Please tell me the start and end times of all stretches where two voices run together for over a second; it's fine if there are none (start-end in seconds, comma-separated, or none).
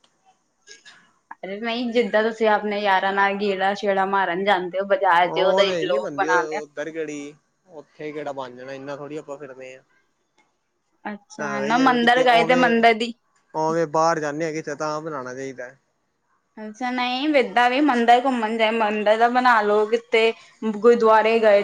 11.3-13.1